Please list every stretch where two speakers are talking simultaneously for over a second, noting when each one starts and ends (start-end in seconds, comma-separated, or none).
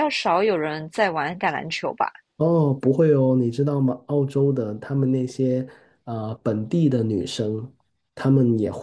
none